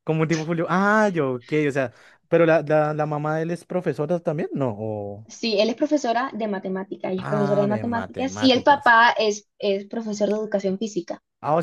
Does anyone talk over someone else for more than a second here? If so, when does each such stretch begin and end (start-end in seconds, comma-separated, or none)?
7.2-8.9